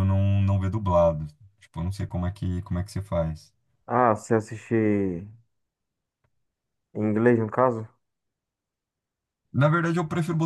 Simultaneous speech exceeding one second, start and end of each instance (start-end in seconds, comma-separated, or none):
none